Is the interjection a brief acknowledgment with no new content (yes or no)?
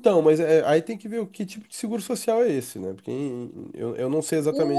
no